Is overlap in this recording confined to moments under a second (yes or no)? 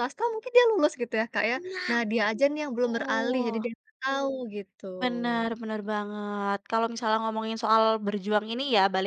yes